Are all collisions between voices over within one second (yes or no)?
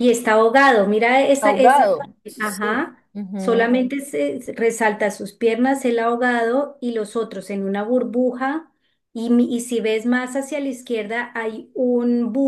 no